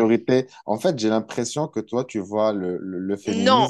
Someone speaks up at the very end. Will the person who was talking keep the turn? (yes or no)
no